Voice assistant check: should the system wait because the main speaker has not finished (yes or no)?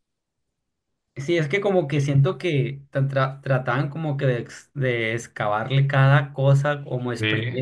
yes